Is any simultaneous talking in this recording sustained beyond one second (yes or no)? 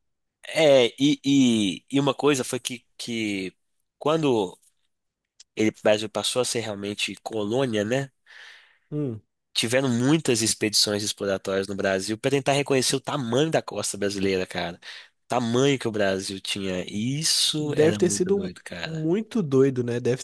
yes